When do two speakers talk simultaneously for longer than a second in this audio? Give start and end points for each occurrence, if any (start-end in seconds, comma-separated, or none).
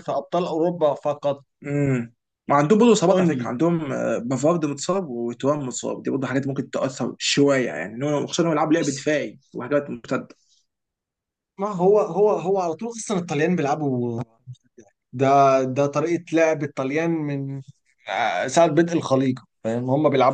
none